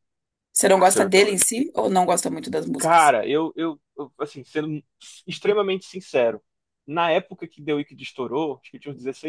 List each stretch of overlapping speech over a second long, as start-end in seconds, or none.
none